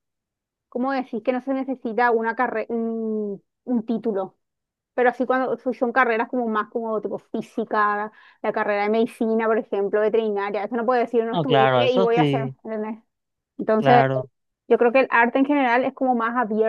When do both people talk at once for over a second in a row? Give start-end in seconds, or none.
11.3-12.5